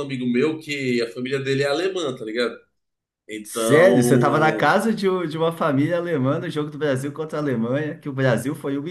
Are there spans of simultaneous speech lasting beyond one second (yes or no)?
yes